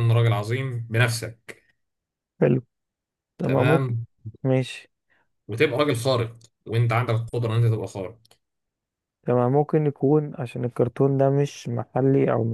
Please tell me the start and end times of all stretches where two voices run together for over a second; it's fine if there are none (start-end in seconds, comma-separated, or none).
none